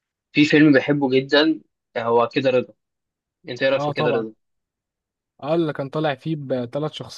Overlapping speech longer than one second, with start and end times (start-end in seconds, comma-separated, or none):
none